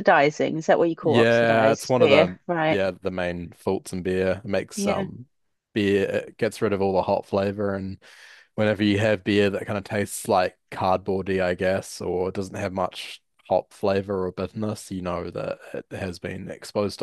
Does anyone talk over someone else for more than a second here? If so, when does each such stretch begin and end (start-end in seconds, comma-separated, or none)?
1.0-2.8